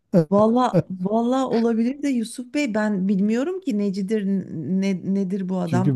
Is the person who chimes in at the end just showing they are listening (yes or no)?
no